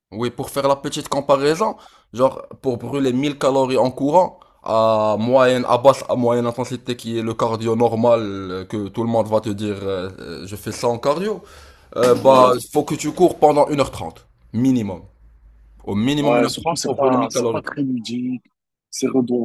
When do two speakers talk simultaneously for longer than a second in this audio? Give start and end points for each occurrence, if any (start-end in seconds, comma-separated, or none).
16.2-17.6